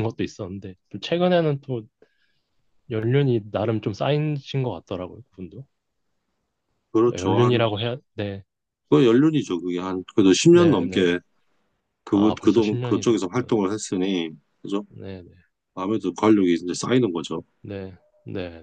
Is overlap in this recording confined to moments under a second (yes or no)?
no